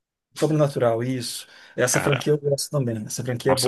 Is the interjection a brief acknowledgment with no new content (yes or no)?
no